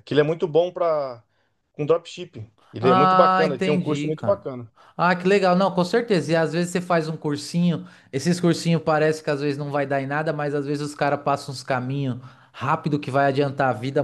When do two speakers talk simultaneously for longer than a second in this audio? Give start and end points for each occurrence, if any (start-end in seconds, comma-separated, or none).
2.8-4.5